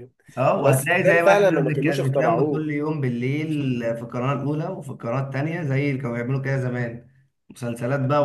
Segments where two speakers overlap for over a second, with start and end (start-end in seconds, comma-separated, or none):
0.6-2.7